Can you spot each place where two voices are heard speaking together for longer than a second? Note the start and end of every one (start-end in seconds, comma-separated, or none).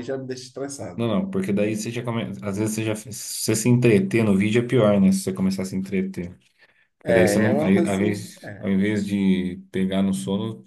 7.0-8.7